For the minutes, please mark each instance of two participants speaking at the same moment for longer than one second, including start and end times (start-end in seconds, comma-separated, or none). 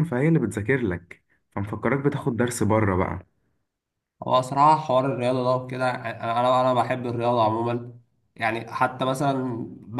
none